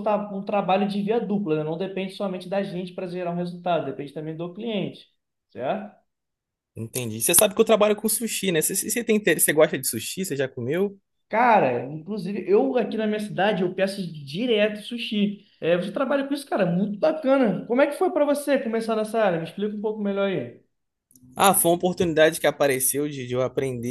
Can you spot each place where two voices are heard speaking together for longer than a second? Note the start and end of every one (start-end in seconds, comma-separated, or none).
none